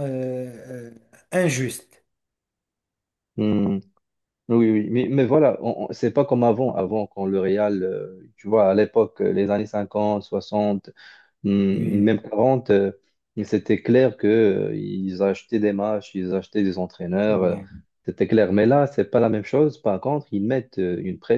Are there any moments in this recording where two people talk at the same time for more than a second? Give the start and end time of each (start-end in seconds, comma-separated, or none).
none